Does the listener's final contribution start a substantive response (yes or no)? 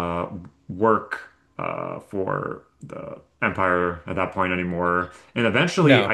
no